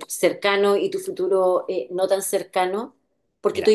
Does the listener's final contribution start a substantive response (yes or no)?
no